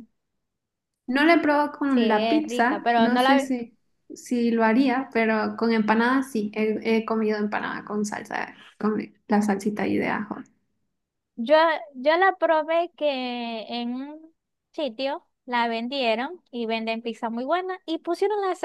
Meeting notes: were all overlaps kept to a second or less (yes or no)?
no